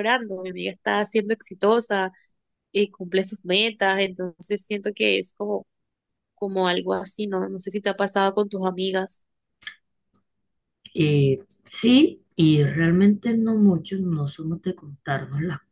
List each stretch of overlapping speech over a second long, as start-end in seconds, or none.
none